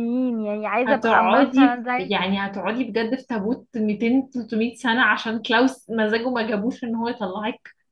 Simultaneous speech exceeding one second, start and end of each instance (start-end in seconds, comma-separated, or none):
0.8-2.2